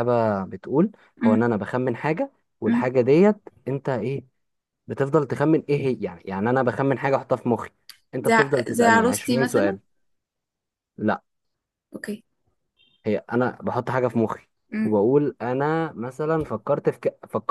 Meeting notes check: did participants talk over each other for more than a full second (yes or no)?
yes